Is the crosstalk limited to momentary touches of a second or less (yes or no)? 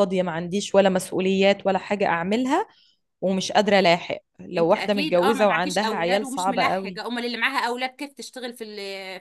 no